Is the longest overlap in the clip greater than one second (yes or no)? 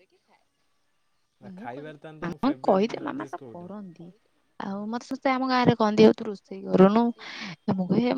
yes